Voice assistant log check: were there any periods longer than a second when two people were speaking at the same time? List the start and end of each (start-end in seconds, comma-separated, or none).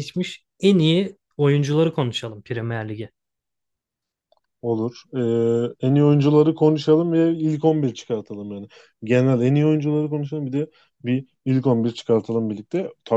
none